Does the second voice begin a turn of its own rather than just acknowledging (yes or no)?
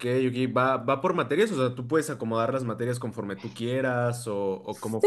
yes